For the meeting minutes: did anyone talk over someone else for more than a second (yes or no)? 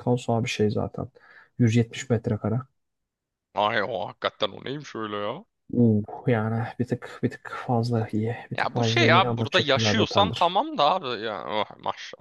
yes